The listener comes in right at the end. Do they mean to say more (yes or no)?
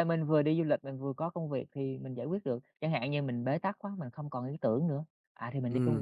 yes